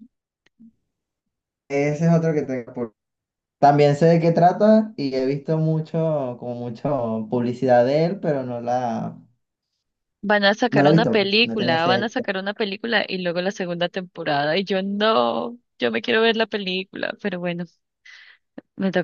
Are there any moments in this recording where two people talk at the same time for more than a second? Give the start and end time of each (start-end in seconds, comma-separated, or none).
10.7-12.1